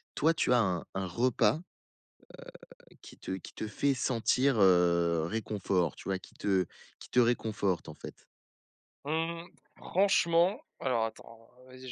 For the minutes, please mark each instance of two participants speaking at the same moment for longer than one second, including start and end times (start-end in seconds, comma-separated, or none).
none